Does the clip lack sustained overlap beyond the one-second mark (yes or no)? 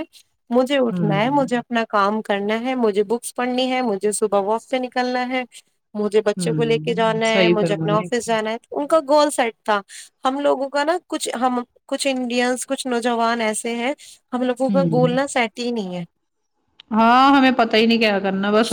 no